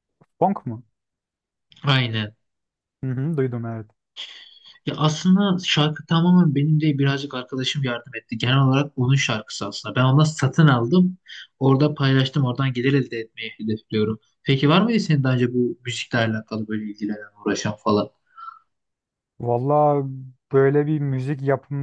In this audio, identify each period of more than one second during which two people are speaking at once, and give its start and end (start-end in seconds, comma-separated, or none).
none